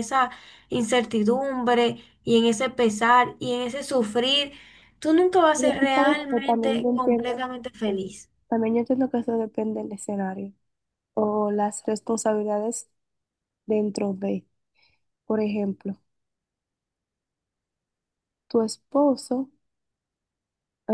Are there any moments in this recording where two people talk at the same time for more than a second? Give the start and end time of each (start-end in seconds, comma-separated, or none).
5.5-7.2